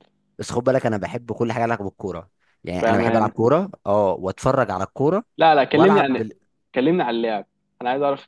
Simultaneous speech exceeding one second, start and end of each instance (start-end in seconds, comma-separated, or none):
none